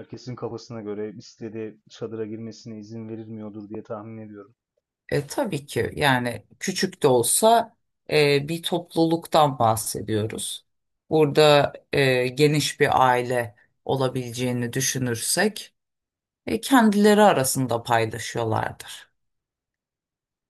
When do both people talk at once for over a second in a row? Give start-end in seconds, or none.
none